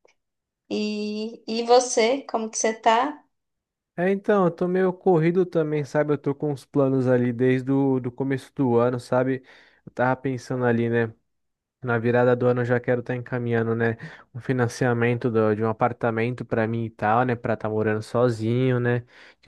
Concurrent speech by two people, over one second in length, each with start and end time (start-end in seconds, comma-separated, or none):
none